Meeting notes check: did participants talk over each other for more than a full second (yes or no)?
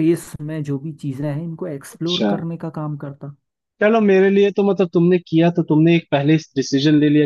no